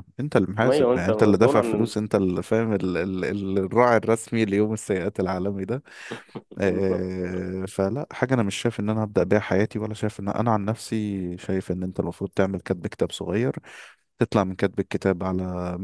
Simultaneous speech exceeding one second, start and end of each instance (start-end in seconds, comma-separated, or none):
0.6-1.9